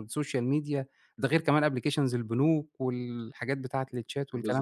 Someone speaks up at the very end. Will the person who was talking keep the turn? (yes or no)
no